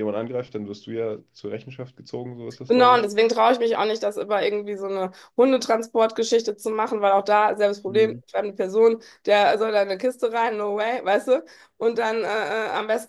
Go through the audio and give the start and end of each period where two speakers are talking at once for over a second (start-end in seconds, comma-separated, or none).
none